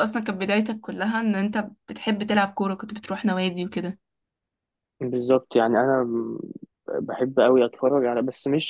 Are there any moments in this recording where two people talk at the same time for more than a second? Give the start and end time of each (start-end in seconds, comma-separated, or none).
none